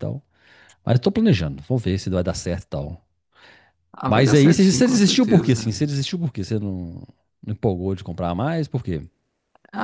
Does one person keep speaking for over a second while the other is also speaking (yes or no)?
yes